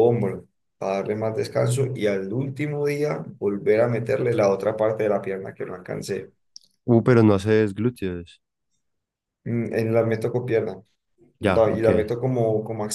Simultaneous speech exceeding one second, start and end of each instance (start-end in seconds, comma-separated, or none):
none